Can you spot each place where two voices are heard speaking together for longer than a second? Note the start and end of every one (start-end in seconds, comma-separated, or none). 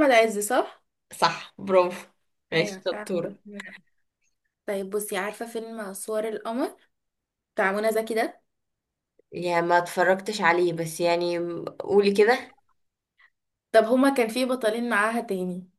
none